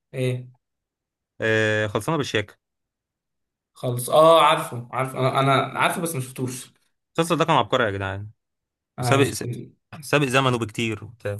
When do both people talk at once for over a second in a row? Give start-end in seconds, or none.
none